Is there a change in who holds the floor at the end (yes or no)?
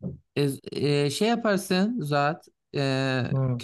no